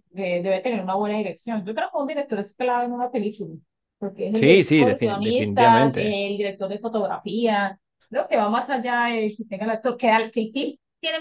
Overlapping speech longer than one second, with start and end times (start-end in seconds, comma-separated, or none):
4.3-6.2